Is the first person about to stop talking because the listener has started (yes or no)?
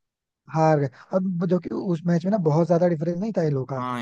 yes